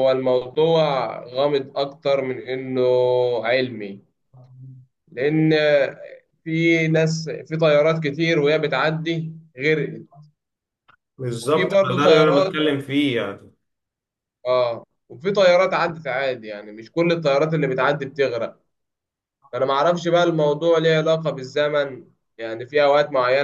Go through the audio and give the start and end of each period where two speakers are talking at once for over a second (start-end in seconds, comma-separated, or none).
11.3-12.6